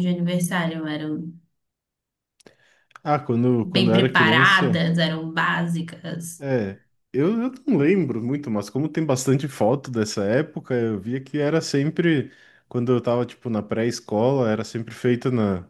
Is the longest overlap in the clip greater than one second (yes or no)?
yes